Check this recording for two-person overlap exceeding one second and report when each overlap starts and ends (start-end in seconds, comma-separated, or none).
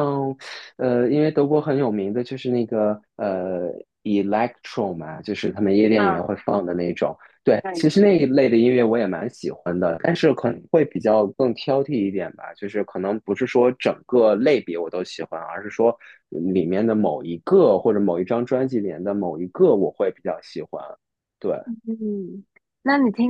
none